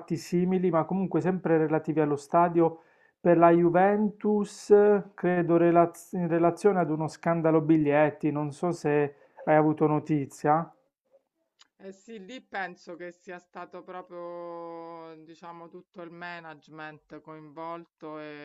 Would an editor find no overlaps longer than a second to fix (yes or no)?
yes